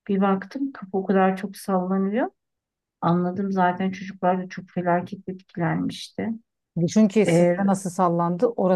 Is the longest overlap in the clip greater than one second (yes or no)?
no